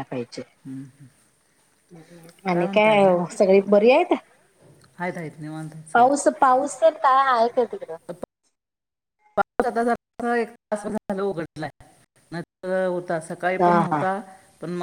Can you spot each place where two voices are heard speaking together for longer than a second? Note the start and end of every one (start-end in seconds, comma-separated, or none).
none